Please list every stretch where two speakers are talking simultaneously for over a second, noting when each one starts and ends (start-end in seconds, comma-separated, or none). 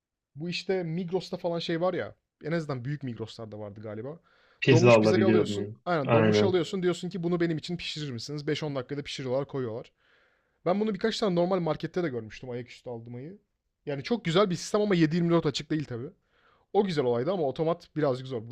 4.7-6.6